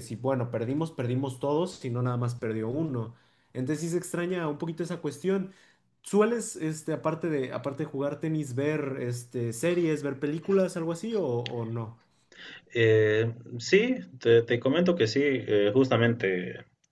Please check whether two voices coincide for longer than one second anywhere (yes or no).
no